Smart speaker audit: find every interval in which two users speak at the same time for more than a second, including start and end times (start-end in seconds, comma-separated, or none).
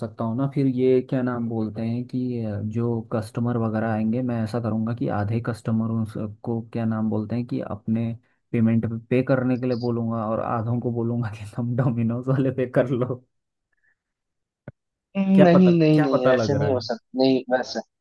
15.3-16.9